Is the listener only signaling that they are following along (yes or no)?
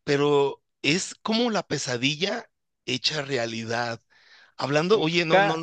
yes